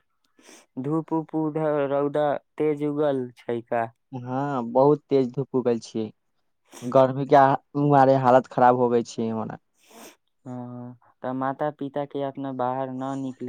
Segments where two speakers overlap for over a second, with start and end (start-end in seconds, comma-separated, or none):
none